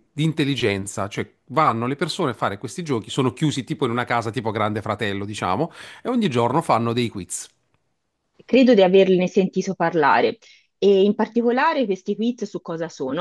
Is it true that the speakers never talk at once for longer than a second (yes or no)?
yes